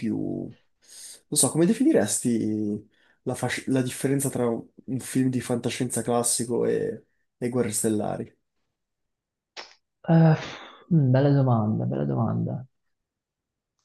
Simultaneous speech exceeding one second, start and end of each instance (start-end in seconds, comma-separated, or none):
none